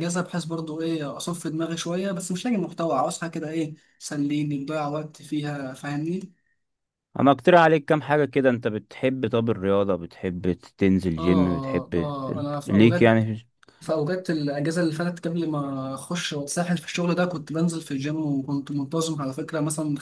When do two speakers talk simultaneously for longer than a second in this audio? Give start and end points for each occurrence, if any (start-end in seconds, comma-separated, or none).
11.2-13.1